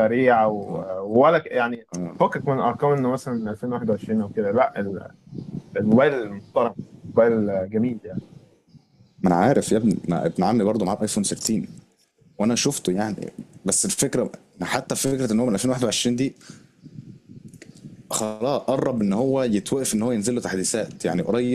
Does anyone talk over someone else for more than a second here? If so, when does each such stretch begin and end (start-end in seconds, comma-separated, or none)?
none